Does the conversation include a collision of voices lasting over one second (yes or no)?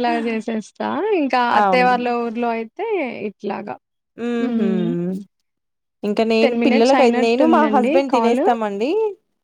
yes